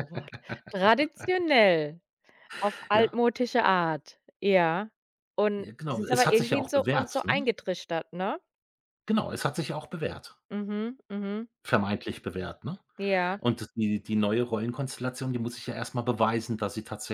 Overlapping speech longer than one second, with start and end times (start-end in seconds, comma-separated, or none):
5.6-7.4